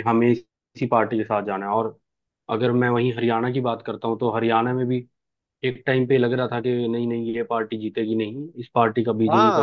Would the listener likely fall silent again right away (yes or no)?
no